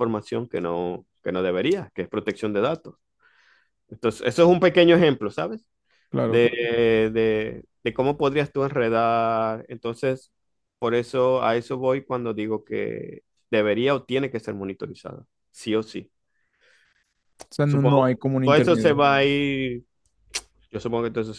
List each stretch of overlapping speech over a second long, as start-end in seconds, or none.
17.6-18.9